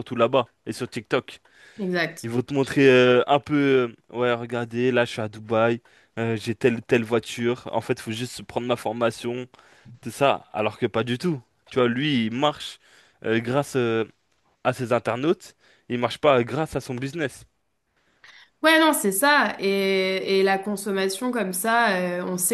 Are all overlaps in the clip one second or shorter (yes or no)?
yes